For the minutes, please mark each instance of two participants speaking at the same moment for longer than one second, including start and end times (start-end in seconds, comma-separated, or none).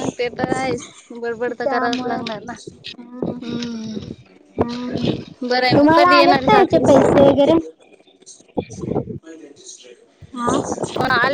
5.8-7.2